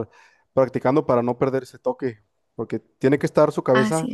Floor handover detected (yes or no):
no